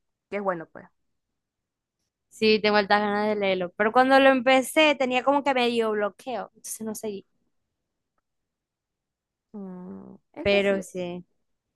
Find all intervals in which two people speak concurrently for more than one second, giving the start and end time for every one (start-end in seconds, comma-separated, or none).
none